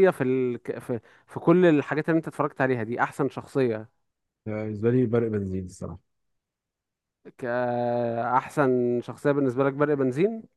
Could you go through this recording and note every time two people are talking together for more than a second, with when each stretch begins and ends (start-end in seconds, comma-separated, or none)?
none